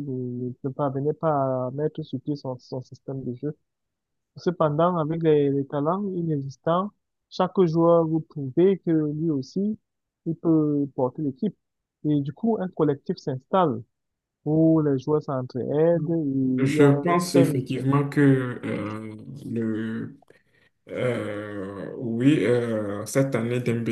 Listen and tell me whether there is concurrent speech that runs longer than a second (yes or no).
yes